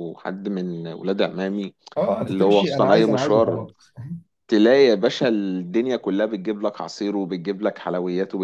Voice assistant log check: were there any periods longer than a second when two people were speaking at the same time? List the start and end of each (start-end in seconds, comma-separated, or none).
2.2-3.7